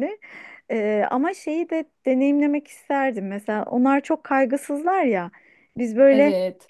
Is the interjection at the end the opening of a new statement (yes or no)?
no